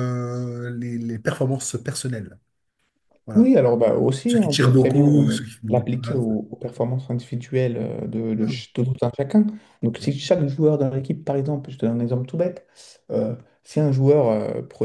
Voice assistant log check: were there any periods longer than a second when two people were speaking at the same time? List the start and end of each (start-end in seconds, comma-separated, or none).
4.2-6.2